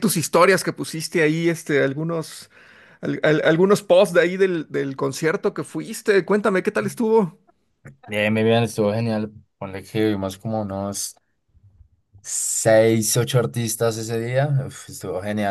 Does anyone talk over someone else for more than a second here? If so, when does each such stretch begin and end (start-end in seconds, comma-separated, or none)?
none